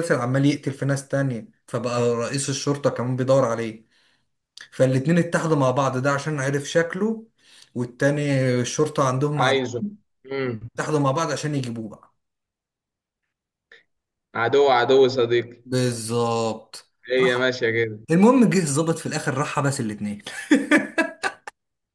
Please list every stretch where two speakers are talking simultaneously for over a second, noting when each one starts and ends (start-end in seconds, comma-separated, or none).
none